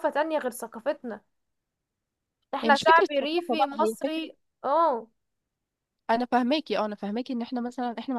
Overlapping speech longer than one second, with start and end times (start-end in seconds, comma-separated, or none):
2.6-4.2